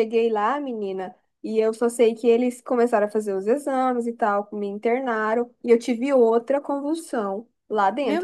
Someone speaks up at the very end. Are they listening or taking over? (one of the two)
listening